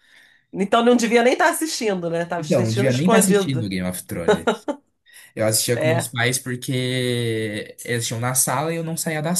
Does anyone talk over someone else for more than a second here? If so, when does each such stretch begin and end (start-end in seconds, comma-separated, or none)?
2.4-3.7